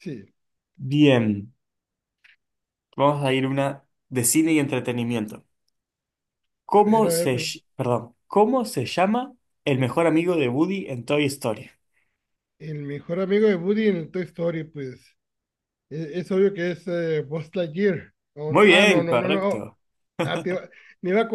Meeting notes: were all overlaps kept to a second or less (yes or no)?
no